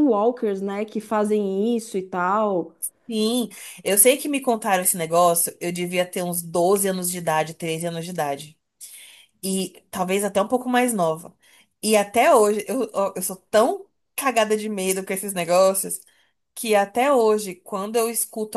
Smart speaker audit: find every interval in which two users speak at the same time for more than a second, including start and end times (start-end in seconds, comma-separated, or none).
none